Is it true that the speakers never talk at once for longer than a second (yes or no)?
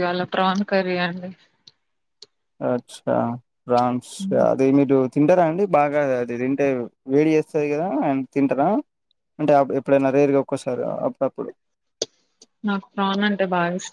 yes